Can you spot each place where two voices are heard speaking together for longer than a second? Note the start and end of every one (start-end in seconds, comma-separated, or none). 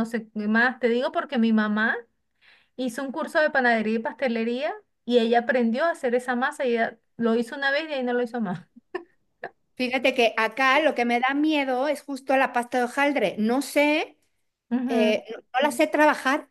none